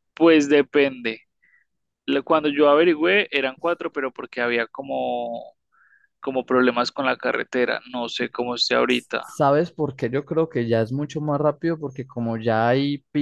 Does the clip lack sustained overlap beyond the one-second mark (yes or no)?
yes